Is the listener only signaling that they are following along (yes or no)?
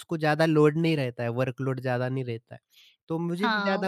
no